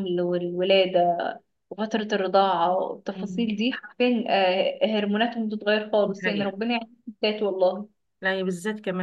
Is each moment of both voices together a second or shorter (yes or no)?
yes